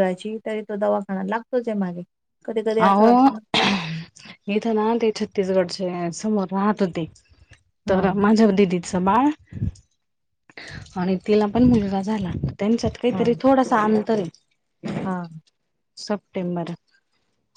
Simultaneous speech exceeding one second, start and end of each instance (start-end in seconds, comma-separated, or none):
none